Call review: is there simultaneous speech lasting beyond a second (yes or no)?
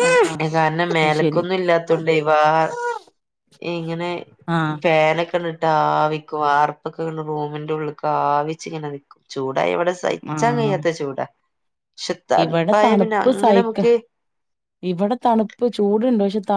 no